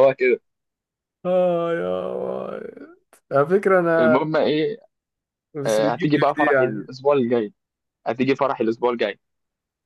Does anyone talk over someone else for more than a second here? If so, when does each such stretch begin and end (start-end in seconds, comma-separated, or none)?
5.7-6.9